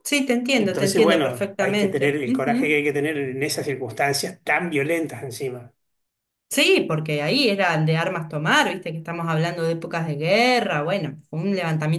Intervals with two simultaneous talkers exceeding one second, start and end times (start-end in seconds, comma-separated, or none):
0.5-2.8